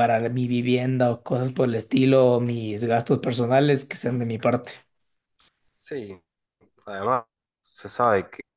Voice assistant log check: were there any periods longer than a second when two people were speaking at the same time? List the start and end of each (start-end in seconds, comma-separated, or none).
none